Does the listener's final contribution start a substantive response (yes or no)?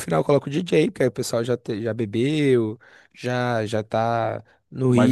yes